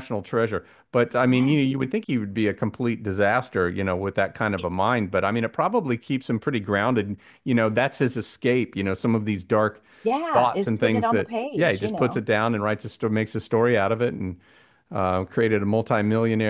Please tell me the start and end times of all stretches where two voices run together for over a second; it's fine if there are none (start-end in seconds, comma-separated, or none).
10.3-12.2